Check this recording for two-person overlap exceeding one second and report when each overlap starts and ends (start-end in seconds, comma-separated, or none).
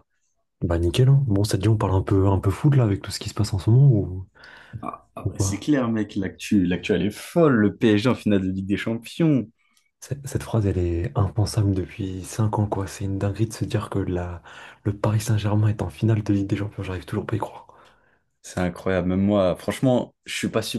none